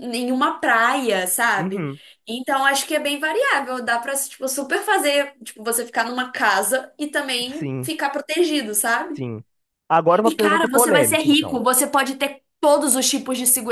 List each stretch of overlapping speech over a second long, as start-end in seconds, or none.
10.2-11.6